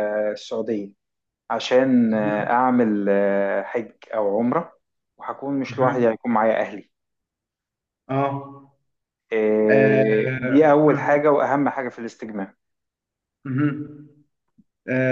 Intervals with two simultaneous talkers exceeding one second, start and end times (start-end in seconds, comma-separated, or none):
9.7-11.2